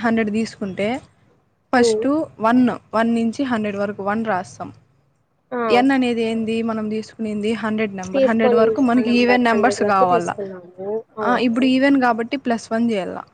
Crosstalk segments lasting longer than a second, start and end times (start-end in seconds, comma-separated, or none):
8.1-10.3